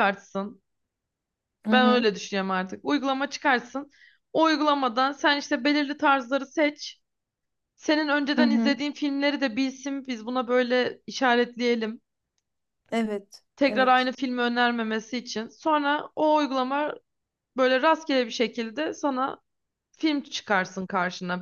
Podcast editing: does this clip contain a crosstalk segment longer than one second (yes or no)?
no